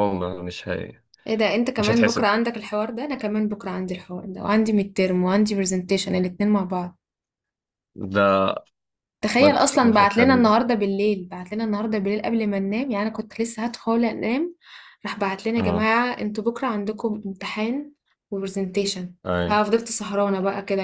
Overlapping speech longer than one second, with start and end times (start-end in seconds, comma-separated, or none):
9.4-10.6